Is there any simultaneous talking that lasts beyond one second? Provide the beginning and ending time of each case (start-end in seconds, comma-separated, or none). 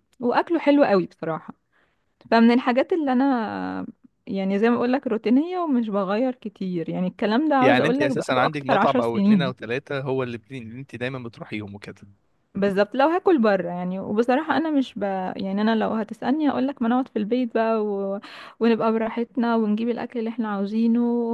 7.6-9.5